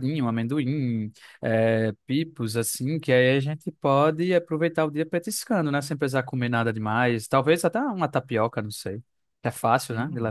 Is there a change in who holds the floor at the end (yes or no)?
yes